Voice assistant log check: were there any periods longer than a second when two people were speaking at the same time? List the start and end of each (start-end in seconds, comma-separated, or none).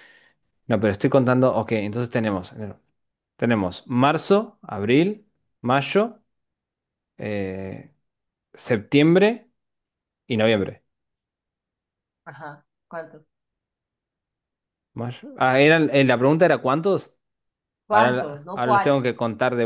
17.9-19.1